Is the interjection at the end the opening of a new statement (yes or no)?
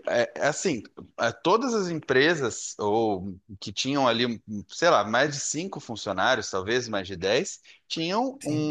no